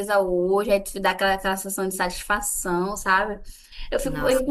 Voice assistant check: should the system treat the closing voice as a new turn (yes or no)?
no